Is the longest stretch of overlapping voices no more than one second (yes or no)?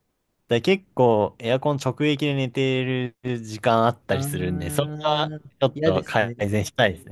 no